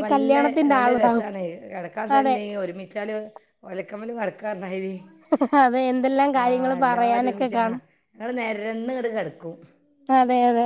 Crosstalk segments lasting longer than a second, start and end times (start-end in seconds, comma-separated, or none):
6.4-7.6